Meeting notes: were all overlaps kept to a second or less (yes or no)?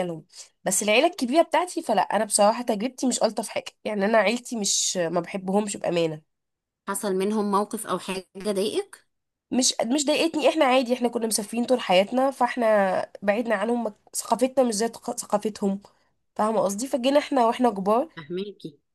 yes